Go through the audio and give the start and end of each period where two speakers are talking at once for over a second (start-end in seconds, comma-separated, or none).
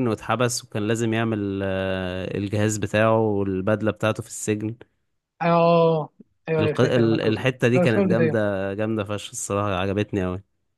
6.6-8.4